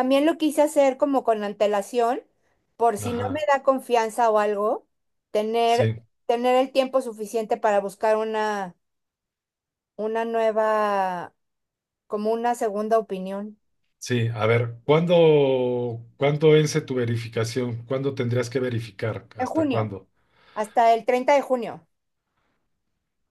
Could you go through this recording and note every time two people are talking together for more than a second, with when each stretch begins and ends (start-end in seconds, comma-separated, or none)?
none